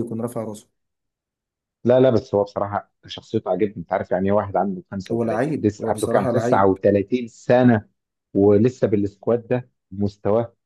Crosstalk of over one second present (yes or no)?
yes